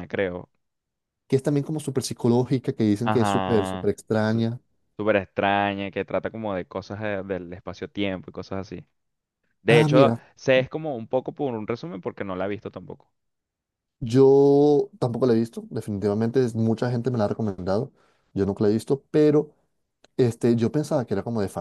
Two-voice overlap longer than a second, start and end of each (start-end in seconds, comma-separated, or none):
3.0-4.5